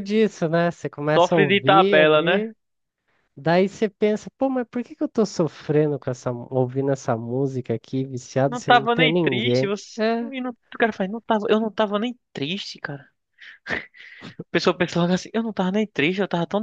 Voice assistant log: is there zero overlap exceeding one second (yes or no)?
no